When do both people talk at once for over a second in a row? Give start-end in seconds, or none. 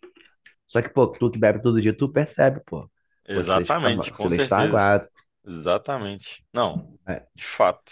3.3-4.8